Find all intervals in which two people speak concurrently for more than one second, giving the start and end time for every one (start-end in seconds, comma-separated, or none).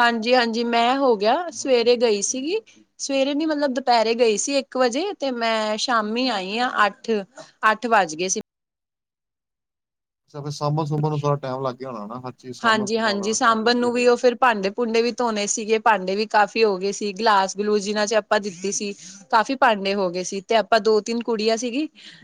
12.7-14.1